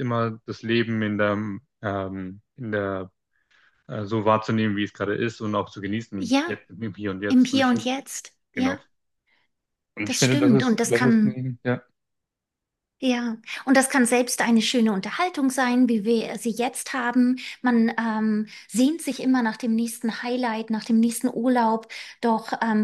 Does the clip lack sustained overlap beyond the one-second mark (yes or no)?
no